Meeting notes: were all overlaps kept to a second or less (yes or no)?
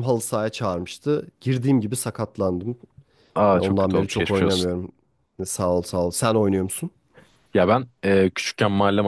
no